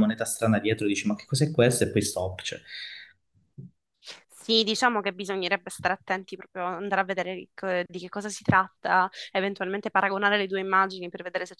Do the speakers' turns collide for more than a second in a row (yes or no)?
no